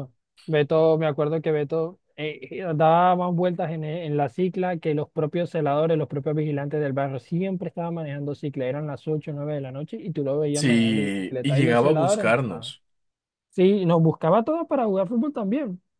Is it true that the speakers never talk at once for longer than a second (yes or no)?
no